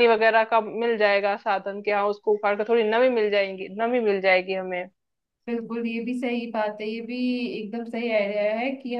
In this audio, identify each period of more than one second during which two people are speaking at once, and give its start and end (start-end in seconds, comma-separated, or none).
none